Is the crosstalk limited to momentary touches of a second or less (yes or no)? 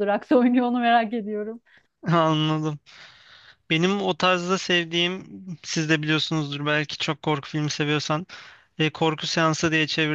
yes